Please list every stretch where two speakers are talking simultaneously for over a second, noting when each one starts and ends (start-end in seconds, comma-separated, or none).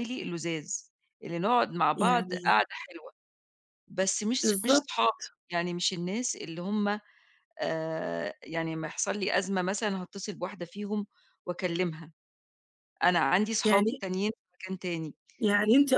none